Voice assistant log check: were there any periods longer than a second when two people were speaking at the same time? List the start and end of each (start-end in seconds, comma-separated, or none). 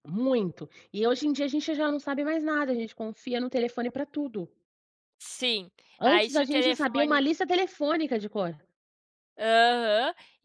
6.0-7.2